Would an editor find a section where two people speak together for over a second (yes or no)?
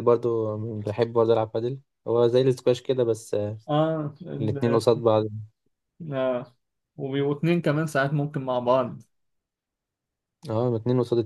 no